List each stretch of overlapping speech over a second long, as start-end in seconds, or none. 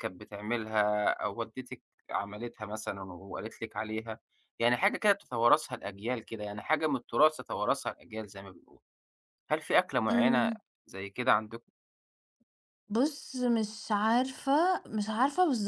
none